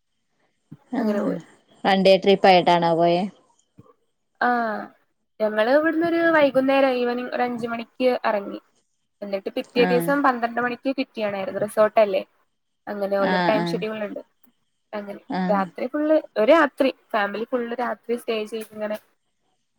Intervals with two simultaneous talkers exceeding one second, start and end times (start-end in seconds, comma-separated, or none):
none